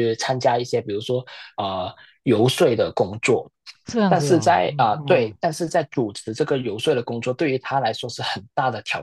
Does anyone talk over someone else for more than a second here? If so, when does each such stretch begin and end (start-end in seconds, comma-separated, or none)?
4.1-5.4